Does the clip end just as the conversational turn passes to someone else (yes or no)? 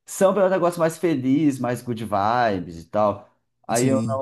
no